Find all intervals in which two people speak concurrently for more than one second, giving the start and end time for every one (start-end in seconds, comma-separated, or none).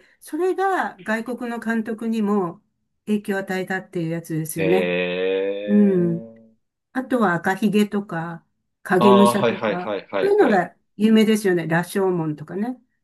9.0-10.7